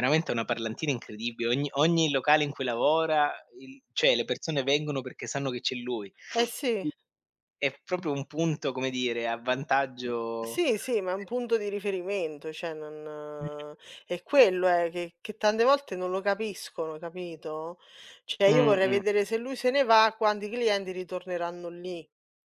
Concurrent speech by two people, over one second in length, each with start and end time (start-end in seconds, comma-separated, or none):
none